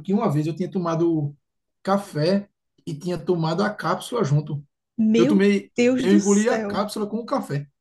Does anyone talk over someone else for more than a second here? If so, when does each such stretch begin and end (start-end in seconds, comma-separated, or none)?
5.2-6.8